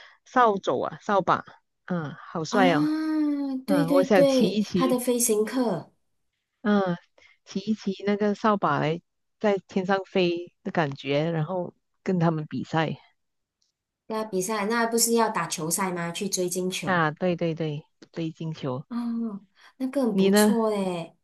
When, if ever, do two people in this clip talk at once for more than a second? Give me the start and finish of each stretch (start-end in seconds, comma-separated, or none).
3.7-5.0